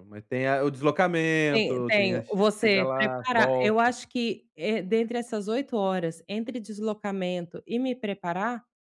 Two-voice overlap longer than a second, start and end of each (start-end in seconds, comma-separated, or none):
1.5-3.9